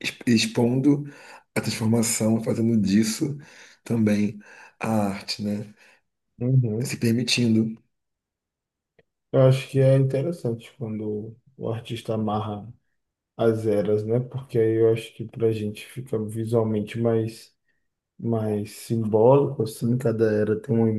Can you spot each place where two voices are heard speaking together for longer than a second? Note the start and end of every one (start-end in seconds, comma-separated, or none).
none